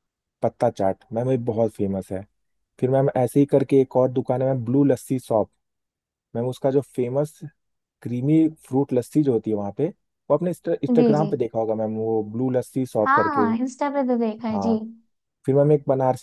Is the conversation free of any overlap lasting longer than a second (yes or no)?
yes